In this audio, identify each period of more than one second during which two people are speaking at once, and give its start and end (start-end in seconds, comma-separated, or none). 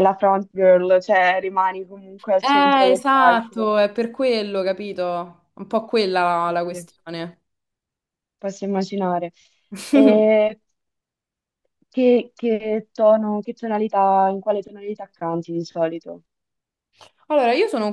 2.4-3.7